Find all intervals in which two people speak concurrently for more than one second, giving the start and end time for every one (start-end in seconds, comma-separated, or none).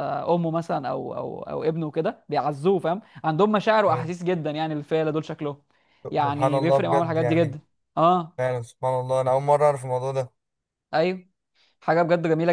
6.2-7.6